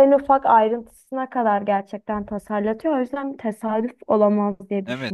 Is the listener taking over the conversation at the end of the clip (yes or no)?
yes